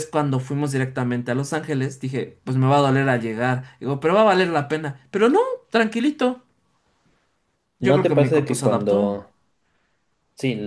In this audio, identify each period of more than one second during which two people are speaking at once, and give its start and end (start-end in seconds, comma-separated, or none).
7.8-9.2